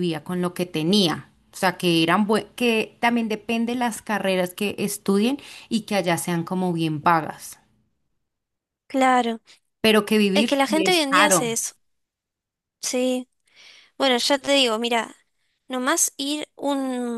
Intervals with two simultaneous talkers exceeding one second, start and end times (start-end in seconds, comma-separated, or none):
10.3-11.6